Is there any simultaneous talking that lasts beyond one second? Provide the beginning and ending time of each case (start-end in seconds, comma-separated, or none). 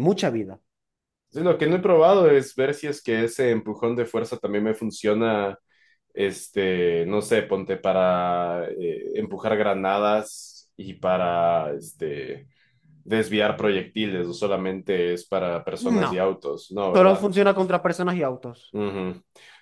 none